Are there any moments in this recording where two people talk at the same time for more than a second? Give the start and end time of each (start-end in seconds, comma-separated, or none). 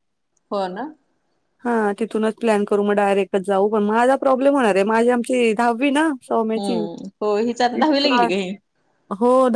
none